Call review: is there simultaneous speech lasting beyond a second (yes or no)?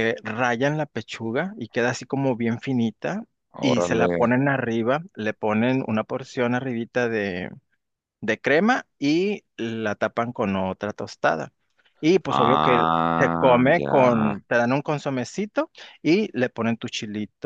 yes